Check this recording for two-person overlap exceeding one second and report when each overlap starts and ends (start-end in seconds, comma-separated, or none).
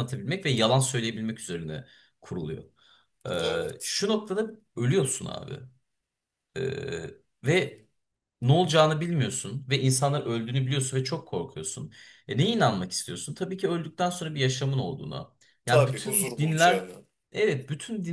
15.7-16.9